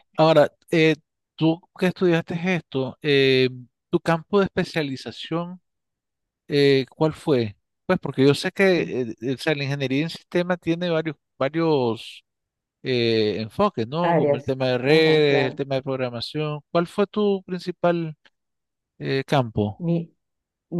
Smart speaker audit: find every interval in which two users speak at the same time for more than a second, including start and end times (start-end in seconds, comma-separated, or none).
14.0-15.6